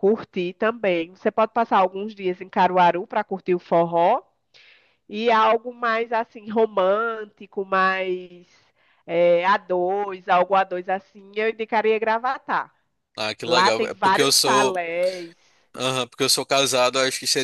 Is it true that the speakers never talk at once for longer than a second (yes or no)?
no